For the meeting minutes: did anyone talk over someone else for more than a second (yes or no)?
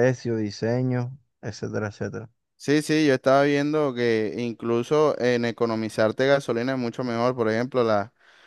no